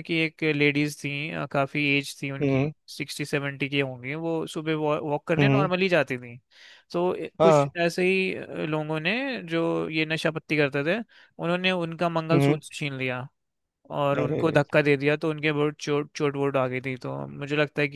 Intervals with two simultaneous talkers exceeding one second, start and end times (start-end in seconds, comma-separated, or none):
none